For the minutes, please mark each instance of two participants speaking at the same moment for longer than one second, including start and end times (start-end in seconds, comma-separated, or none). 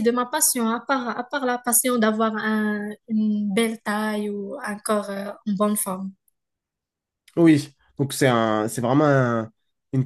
none